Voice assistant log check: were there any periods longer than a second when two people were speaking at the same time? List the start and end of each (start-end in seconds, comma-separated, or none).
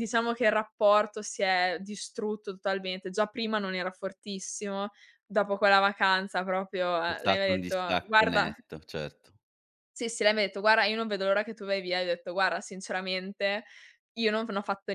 7.0-8.5